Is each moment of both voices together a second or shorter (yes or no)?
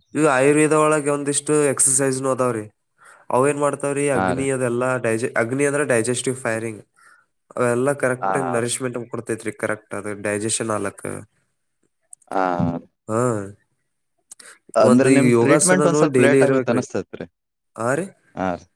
no